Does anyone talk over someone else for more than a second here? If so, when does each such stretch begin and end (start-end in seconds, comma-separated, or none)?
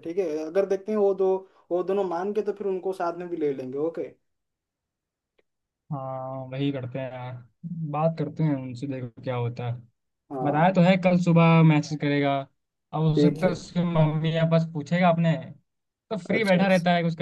none